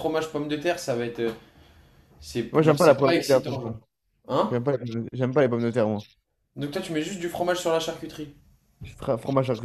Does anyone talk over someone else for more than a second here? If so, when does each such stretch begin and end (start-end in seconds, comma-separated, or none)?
2.5-3.8